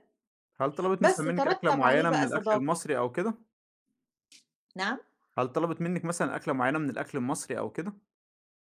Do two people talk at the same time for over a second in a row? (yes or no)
yes